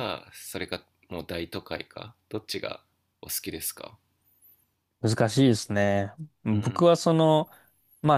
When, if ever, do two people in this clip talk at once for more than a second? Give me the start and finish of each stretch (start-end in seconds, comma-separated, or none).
none